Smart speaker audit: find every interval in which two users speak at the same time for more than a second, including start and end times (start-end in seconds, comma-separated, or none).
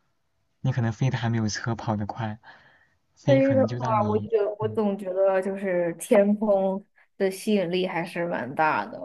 3.3-4.8